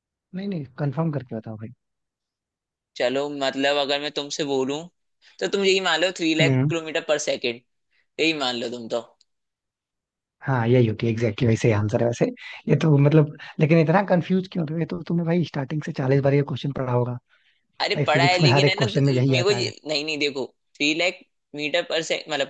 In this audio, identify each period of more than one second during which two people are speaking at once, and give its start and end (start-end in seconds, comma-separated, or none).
17.9-19.7